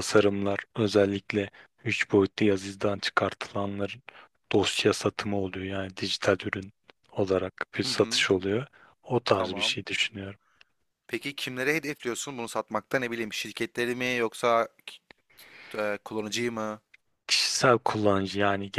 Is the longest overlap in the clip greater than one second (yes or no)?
no